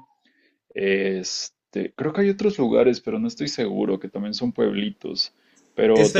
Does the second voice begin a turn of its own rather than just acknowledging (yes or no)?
yes